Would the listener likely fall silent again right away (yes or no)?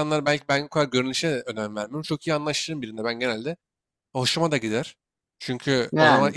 yes